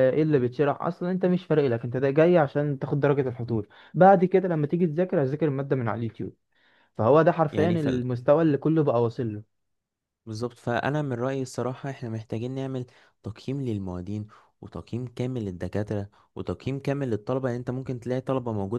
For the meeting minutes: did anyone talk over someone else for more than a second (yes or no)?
no